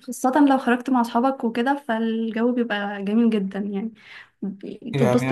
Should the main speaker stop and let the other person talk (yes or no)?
yes